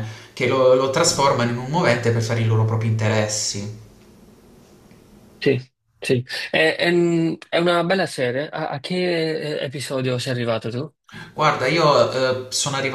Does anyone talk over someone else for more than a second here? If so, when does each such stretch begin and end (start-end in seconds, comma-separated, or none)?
none